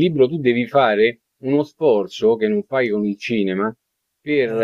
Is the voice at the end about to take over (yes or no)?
no